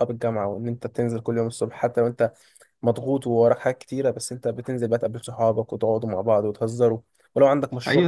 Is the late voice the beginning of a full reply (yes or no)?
yes